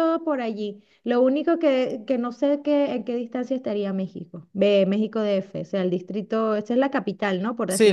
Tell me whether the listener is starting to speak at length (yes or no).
yes